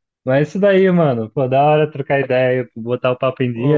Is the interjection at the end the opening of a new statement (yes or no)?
yes